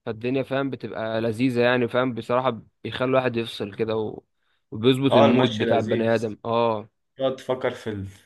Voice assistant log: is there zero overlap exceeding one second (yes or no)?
no